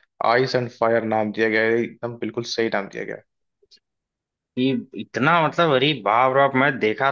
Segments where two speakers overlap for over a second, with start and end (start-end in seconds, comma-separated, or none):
none